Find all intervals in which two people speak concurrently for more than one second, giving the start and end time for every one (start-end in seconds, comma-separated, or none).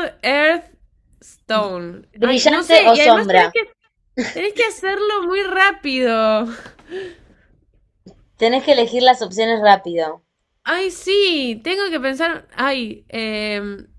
2.2-3.4